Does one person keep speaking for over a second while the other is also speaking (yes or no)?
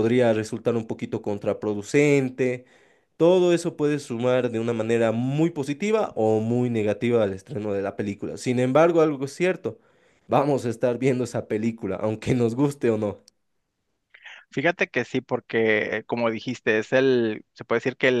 no